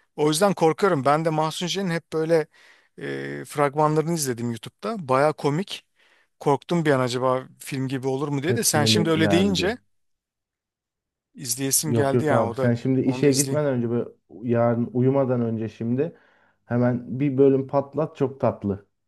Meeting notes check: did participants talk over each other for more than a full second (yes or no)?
yes